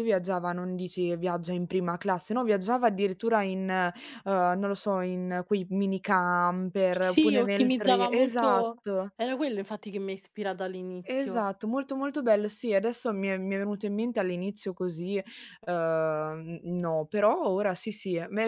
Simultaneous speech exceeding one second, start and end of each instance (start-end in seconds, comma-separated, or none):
6.9-9.1